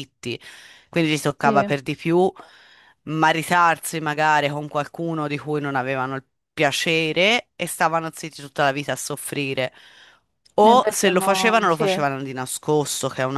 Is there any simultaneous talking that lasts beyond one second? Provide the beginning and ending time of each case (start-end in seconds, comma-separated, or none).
10.7-12.0